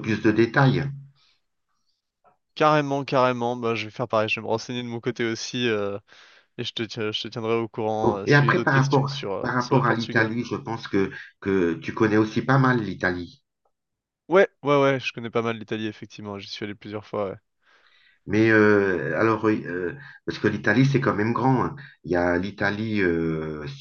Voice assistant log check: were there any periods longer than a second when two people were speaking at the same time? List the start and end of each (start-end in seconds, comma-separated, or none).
8.0-10.3